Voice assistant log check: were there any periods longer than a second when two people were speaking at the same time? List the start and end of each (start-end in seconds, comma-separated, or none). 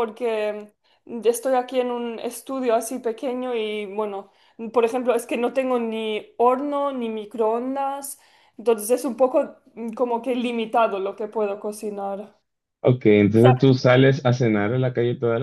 none